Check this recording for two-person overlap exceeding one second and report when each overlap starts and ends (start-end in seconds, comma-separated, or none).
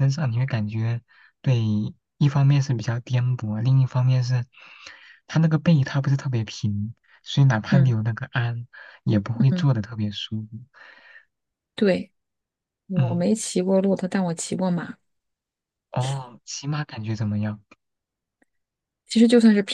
none